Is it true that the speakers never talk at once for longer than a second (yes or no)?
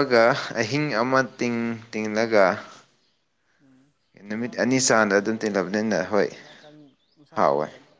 no